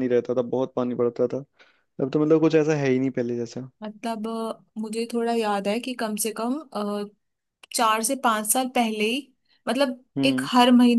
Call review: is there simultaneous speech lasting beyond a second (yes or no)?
no